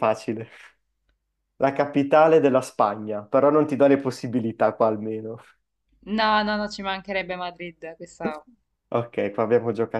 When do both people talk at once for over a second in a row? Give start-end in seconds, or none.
none